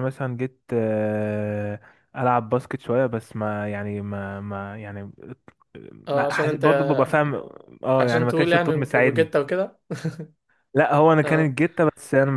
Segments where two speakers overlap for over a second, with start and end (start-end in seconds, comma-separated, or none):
8.0-9.3